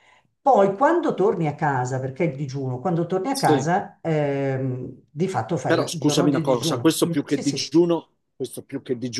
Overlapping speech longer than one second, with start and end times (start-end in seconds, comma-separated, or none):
5.7-7.7